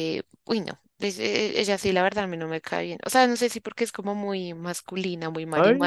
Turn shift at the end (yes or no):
yes